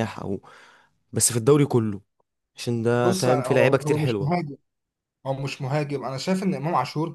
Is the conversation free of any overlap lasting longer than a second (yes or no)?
no